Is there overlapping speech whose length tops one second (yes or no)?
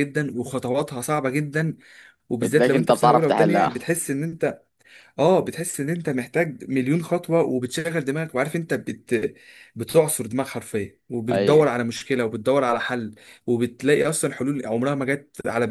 yes